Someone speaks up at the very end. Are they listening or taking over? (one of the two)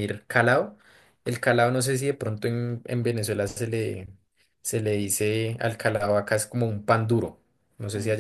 listening